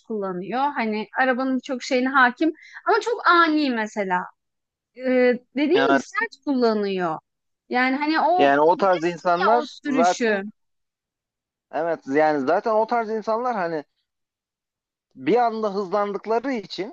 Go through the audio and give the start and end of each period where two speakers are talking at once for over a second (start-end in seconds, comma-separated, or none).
8.4-10.4